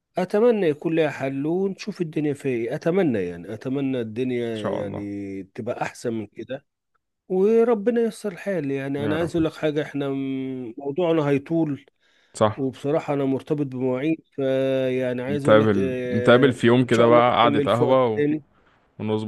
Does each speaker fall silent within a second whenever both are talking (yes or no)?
no